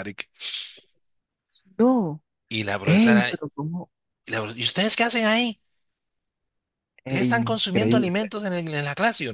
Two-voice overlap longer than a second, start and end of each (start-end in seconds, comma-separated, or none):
7.0-8.3